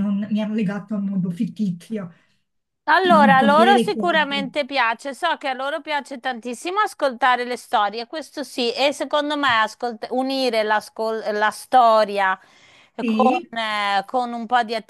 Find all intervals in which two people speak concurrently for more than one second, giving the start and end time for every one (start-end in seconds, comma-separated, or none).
3.1-4.5